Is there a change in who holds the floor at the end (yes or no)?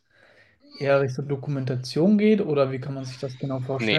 yes